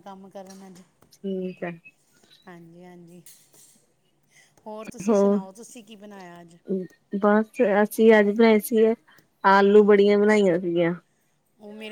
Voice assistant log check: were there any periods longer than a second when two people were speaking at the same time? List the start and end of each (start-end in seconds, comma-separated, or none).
none